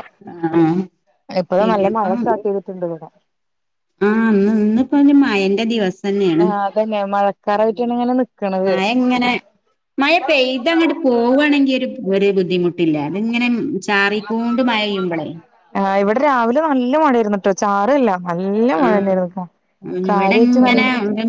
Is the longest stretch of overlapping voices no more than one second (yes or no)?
yes